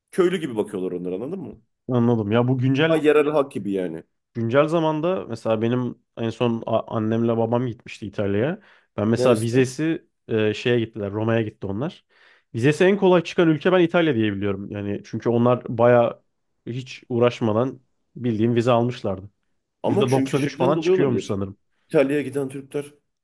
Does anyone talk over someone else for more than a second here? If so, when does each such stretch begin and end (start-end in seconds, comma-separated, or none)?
19.9-21.4